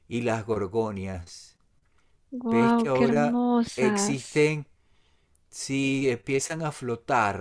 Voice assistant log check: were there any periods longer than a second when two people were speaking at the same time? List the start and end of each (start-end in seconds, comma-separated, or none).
2.5-4.5